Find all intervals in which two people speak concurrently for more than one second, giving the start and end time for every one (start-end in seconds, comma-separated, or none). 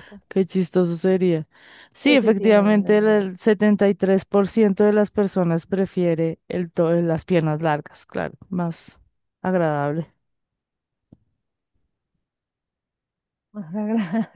2.0-3.3